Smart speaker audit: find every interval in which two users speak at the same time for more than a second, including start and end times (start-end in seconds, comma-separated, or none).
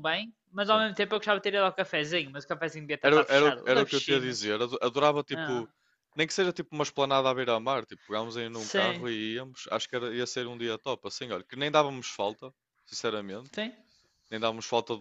3.0-4.5